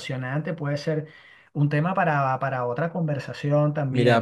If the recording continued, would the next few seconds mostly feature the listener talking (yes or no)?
yes